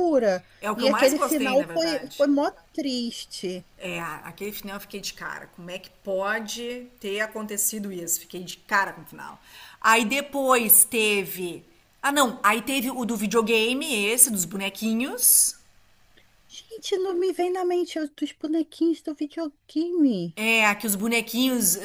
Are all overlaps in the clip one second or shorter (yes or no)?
no